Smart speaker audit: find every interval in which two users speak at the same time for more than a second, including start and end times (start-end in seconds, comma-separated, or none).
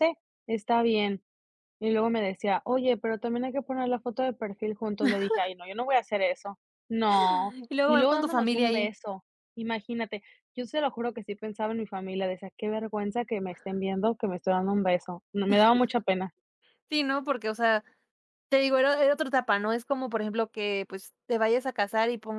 7.7-8.9